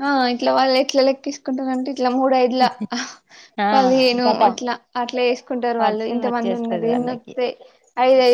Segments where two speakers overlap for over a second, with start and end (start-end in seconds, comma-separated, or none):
5.8-7.3